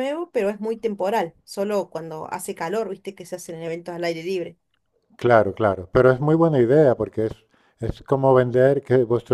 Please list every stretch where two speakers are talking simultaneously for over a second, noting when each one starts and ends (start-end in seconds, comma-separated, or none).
none